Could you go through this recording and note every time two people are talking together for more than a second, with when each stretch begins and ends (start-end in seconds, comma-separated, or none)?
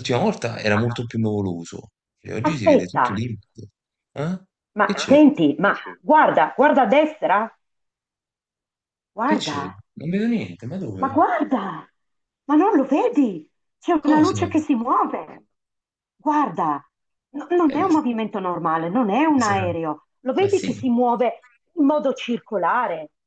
none